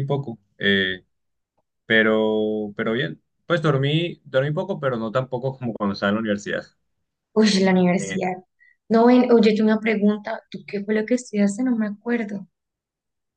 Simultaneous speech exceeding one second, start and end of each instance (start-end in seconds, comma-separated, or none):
none